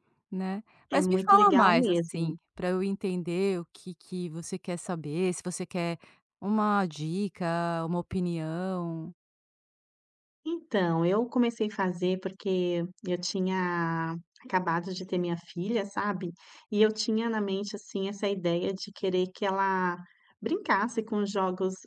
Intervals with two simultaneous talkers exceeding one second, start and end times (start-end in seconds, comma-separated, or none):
0.9-2.3